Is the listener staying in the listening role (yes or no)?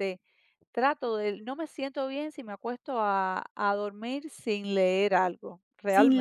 no